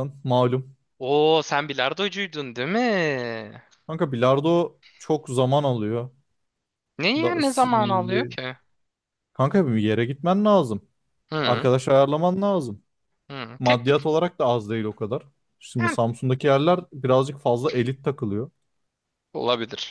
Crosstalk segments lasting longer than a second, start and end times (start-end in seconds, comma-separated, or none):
7.1-8.3